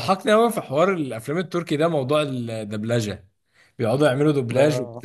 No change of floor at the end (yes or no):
yes